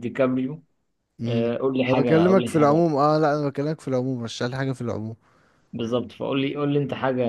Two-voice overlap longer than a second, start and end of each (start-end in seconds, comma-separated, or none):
1.2-2.8